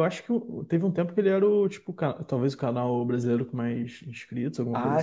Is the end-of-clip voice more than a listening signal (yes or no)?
yes